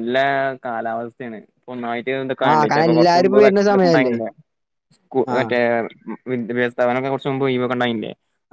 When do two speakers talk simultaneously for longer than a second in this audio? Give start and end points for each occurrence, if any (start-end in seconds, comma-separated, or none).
2.5-4.2